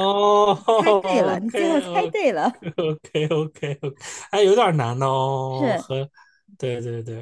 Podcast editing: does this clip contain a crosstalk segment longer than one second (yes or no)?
yes